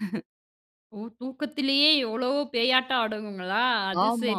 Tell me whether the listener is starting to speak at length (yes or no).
yes